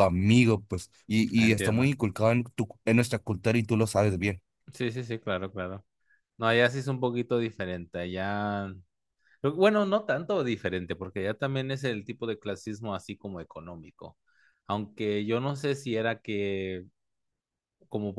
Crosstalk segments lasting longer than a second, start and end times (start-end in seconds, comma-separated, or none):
none